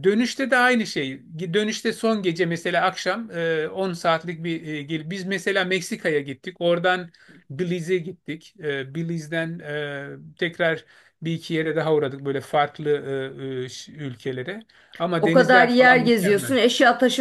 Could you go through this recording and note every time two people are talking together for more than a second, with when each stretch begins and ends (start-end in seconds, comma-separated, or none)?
15.2-16.5